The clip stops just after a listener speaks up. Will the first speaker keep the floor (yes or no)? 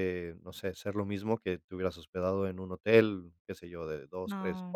yes